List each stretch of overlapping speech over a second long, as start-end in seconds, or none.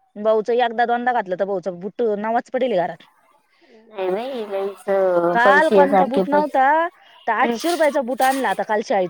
5.3-6.6